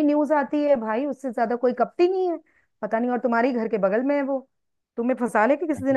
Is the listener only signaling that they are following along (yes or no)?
no